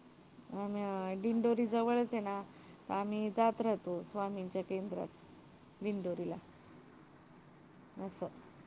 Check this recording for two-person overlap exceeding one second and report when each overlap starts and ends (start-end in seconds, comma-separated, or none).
0.8-2.4